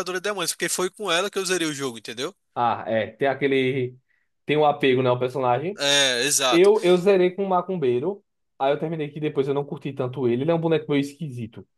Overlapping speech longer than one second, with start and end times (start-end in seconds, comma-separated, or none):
none